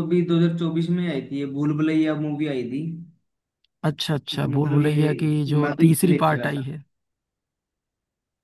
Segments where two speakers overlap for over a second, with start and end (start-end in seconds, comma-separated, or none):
4.3-6.7